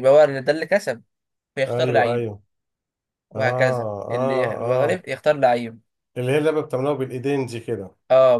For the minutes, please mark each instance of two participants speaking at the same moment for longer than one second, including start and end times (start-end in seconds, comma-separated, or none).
3.4-5.0